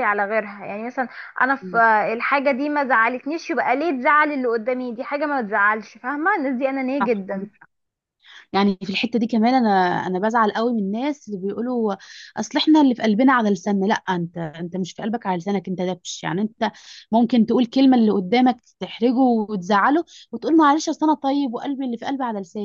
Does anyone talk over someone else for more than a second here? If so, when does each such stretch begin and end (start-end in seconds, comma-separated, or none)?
none